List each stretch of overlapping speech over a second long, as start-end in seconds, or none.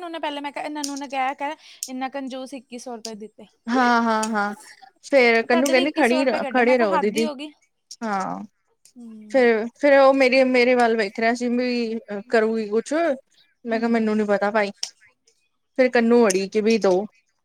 5.5-7.3